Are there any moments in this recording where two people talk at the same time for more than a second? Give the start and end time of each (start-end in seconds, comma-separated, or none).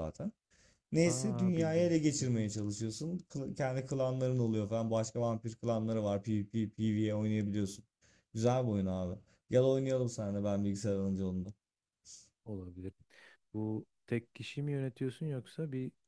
1.0-2.4